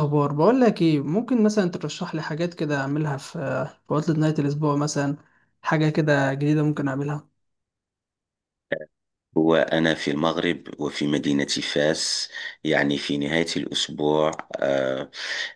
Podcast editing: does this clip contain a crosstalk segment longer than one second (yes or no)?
no